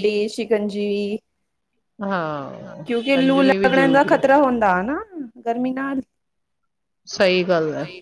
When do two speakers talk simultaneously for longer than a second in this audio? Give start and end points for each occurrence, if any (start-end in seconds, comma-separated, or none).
2.9-4.2